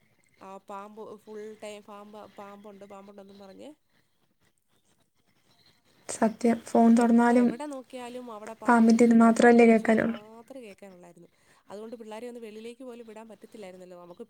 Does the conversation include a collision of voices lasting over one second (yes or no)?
yes